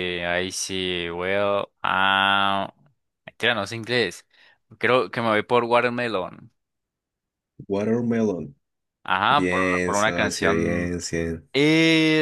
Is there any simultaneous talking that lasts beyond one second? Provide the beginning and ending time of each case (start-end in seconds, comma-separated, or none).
9.3-10.9